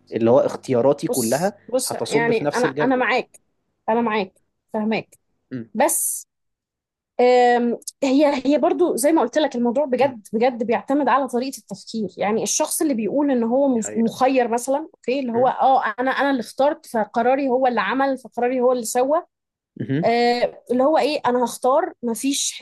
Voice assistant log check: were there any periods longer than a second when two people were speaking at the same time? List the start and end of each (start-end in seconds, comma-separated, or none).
1.1-3.1